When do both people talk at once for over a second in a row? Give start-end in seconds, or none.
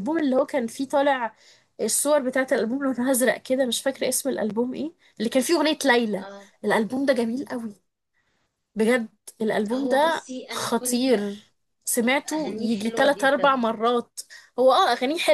9.6-11.2, 12.3-13.7